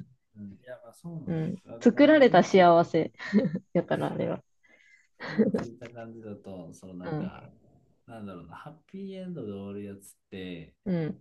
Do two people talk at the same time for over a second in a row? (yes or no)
yes